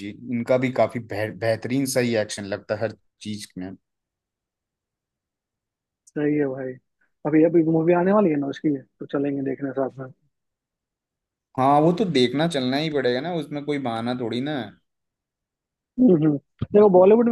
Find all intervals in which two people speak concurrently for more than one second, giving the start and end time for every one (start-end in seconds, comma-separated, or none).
none